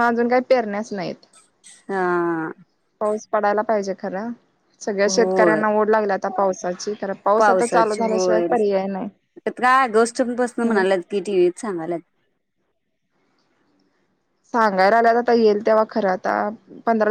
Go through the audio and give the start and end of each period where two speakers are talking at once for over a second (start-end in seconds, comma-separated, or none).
7.4-9.1